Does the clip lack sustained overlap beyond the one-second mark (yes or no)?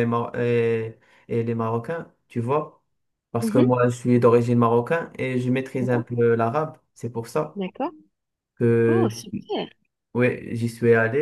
yes